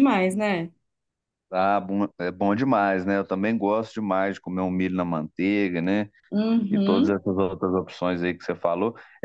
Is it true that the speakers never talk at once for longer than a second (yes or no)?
yes